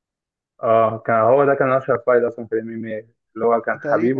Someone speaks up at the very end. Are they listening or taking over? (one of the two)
listening